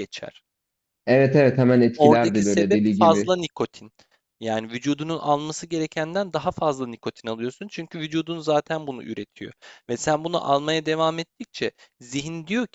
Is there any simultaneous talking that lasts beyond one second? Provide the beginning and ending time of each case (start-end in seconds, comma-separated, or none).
1.9-3.3